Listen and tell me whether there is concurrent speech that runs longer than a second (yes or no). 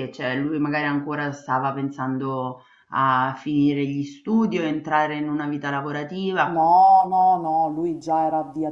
no